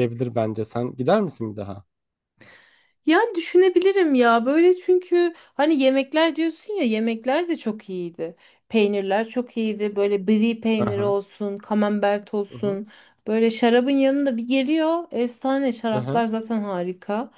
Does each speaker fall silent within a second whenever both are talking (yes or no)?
yes